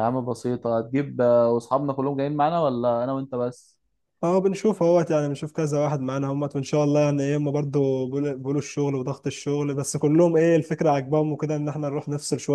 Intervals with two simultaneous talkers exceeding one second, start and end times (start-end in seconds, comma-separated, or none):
none